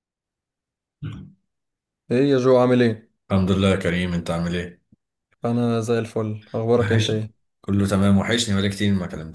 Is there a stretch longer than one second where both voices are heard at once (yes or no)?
no